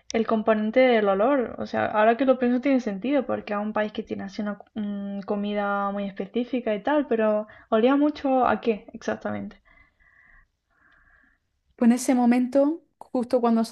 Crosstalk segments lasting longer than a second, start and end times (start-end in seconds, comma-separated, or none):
none